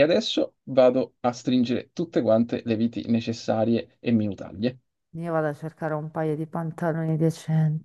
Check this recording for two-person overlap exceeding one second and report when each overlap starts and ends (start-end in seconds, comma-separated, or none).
none